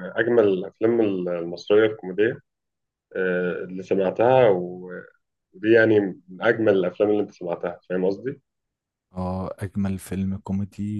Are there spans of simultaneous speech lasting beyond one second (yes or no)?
no